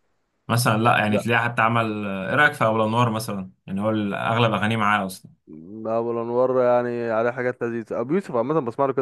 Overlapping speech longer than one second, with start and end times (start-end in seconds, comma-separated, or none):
none